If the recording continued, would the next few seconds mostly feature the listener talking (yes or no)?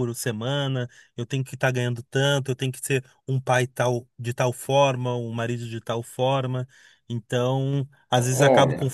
no